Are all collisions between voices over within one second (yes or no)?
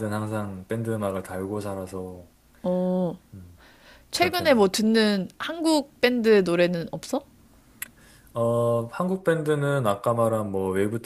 yes